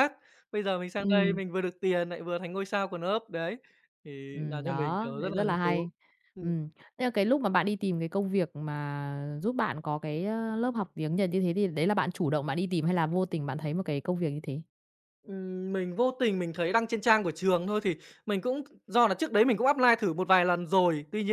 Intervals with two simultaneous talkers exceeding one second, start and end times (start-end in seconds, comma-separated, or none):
4.3-5.9